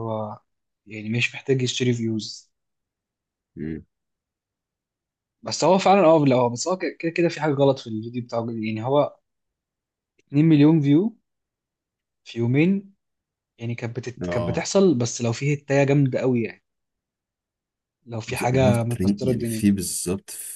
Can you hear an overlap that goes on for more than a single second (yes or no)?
yes